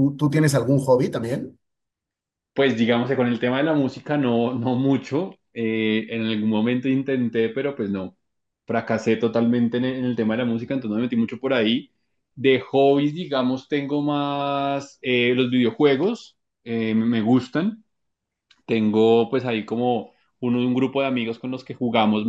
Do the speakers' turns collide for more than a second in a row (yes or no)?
no